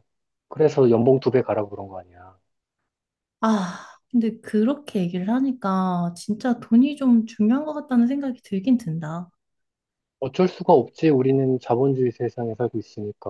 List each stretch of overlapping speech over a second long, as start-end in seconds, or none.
none